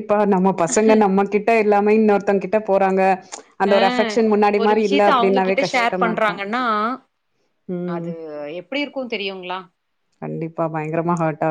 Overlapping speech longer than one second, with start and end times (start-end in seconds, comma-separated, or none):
4.6-6.4